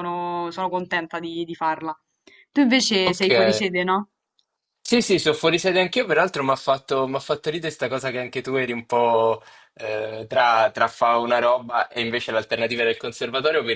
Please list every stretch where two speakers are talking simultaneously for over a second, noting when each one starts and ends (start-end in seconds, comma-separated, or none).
none